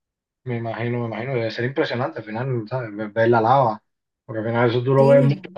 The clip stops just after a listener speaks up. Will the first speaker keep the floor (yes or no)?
yes